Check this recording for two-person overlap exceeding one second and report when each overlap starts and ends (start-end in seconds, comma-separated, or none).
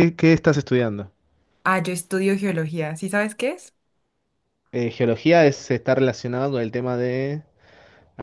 none